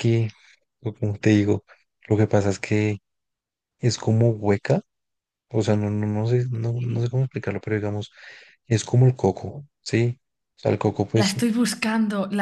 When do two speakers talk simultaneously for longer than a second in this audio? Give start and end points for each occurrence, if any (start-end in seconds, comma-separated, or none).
none